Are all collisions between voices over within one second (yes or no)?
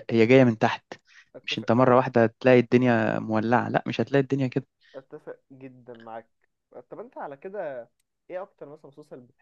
yes